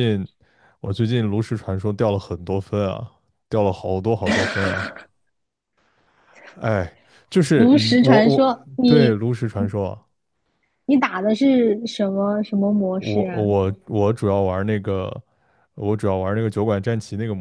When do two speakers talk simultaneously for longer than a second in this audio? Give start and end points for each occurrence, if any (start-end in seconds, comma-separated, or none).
7.5-9.2